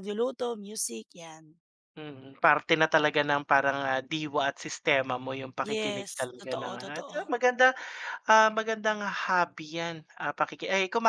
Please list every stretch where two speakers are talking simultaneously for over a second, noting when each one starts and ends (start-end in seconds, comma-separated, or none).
5.6-7.3